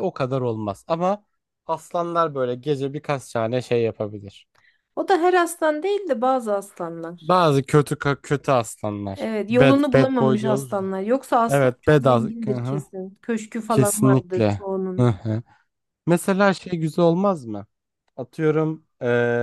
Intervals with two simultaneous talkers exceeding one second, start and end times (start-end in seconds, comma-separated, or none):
9.1-10.8, 11.5-12.8, 13.7-15.1